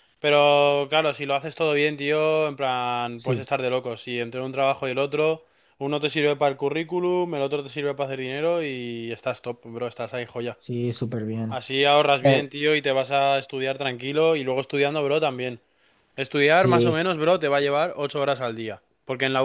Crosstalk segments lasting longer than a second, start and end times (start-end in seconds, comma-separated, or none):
none